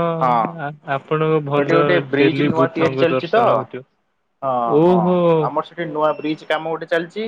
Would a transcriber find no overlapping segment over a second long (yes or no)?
no